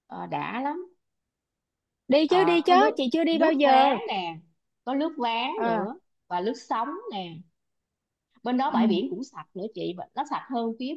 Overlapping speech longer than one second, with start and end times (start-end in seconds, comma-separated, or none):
2.3-4.0